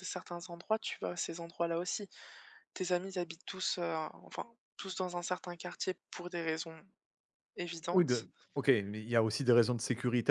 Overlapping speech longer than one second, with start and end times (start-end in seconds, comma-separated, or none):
none